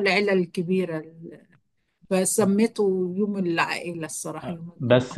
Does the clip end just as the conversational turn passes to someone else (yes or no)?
yes